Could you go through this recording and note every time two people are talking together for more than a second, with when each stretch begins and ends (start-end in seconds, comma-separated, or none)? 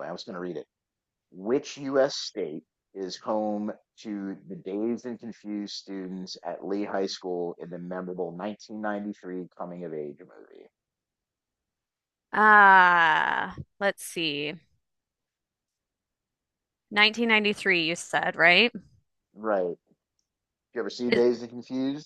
none